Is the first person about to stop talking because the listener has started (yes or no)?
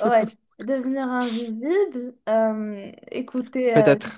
yes